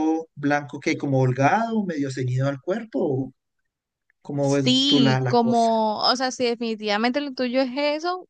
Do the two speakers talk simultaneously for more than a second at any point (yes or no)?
yes